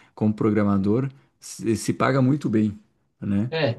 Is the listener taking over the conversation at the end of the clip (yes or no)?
yes